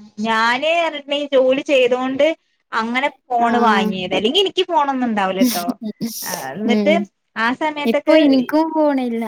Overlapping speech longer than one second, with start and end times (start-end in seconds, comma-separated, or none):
none